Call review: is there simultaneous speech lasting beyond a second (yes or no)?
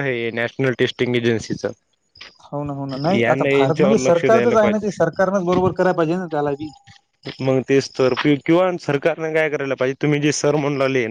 yes